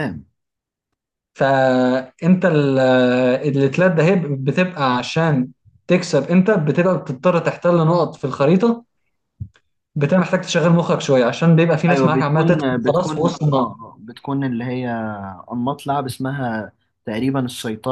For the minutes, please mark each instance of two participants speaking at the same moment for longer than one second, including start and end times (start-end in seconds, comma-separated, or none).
11.9-13.7